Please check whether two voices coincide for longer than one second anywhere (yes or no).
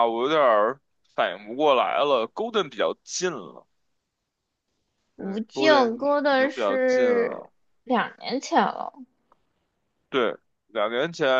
yes